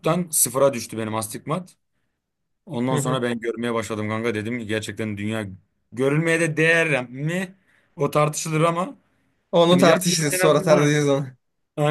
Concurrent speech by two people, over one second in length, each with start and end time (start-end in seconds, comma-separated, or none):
9.7-10.9